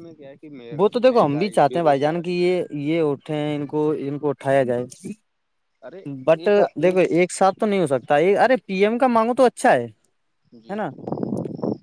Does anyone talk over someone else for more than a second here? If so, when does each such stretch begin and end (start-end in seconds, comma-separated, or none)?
1.1-2.4